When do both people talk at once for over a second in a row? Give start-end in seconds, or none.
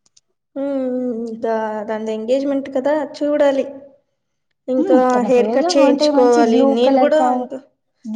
5.1-7.4